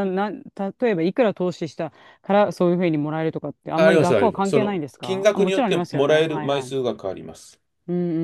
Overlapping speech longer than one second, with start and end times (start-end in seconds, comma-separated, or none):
3.8-6.7